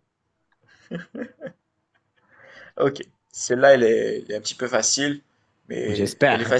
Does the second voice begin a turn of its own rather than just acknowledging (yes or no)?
no